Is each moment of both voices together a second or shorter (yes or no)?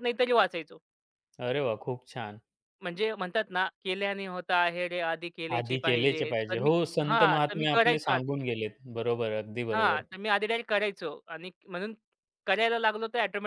no